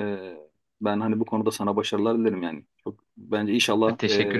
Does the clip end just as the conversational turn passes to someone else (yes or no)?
no